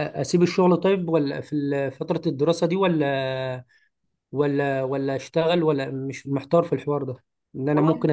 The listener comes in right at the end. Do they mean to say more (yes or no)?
no